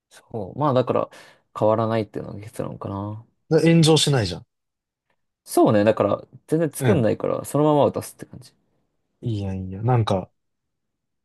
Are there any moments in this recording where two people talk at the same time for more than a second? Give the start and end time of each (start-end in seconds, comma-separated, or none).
none